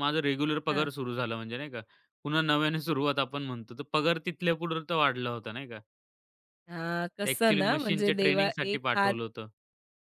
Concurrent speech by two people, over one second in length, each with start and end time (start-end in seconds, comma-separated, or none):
7.2-9.1